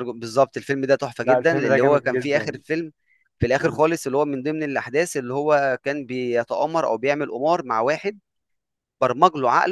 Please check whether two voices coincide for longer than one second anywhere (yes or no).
yes